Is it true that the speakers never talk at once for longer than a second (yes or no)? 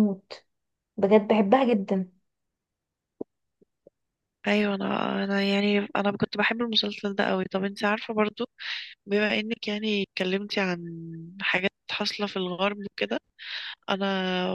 yes